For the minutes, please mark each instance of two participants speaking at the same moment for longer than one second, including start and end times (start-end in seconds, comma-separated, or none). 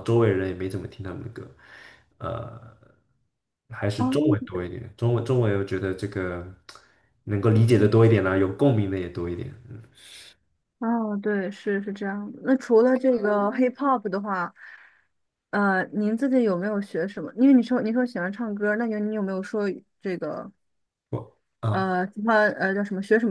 none